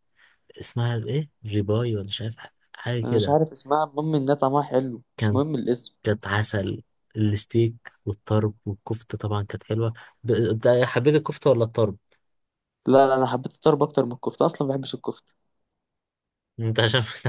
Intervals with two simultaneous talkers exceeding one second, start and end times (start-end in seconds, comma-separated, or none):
none